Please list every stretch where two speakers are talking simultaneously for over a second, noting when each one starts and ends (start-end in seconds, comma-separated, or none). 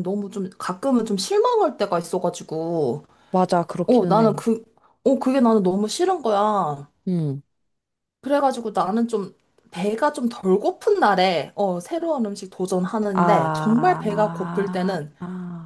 13.1-15.1